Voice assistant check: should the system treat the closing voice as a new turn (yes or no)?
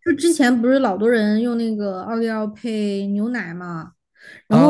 yes